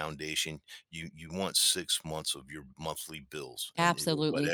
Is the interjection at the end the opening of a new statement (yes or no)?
no